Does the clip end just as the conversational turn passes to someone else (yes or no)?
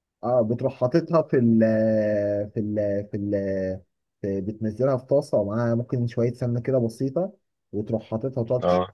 no